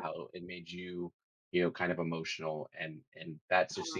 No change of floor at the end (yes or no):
yes